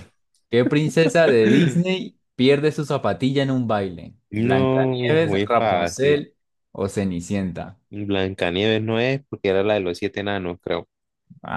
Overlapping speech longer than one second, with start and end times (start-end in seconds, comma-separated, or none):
4.3-6.2